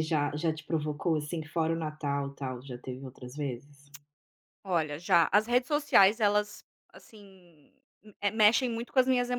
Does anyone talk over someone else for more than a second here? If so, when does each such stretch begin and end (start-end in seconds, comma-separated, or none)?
none